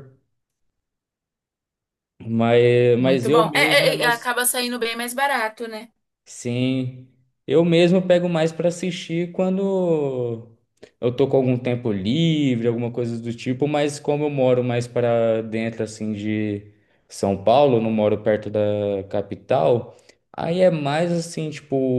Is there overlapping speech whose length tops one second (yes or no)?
yes